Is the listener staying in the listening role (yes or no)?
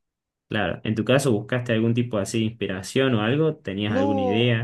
no